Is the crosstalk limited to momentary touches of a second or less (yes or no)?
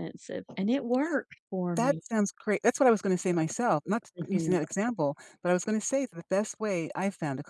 yes